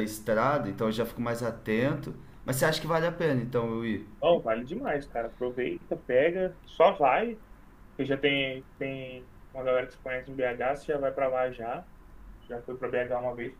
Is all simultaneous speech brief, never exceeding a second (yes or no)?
yes